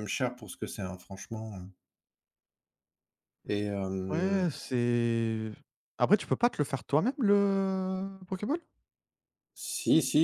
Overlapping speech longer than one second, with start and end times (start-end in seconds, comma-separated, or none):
none